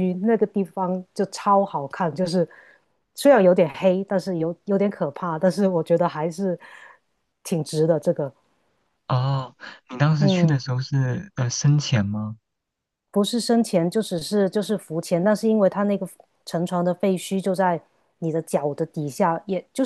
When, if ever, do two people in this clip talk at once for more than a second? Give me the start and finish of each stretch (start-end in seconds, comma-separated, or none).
none